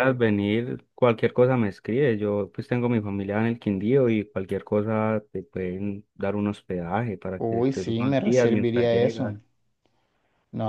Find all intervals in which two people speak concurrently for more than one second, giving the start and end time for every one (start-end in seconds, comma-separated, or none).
7.4-9.3